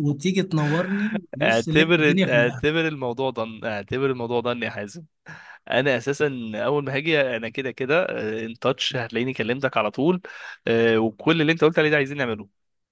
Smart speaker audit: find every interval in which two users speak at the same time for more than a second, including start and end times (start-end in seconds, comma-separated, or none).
1.4-2.6